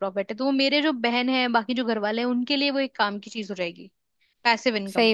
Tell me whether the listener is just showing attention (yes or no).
no